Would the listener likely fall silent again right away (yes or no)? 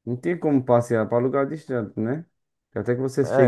no